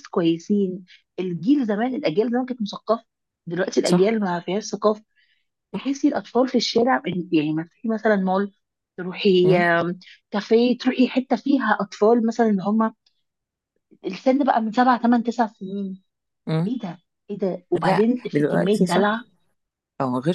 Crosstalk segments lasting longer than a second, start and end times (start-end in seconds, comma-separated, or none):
17.8-19.2